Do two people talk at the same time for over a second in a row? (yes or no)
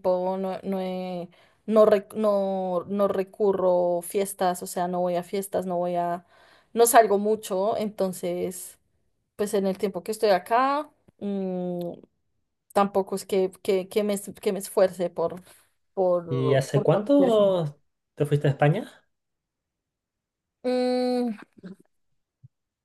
yes